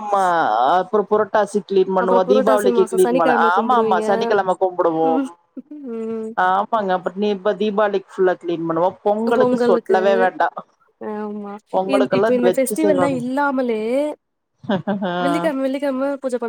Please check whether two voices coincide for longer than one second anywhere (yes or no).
yes